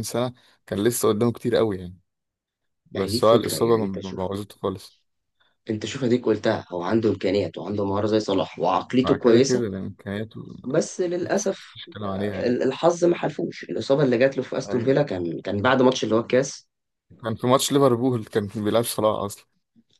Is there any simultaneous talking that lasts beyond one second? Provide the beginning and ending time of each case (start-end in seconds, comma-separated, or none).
2.9-4.3